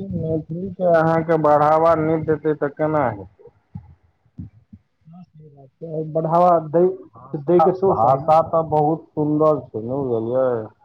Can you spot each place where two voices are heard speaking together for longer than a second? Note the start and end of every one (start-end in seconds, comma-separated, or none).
6.6-8.3